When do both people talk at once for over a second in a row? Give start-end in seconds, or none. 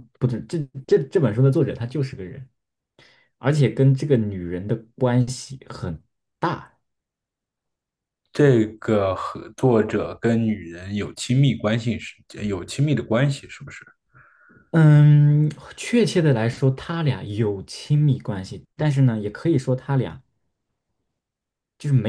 none